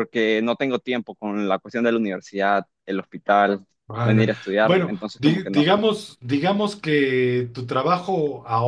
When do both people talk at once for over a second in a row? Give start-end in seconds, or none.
4.0-5.7